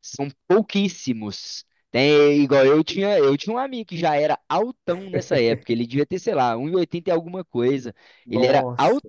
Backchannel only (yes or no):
yes